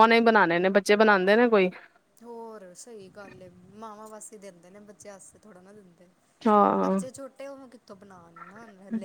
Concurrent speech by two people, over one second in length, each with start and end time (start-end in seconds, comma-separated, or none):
none